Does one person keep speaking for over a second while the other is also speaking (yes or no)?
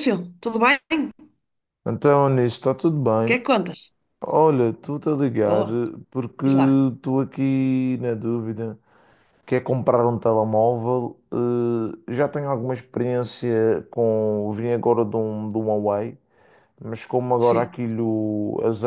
no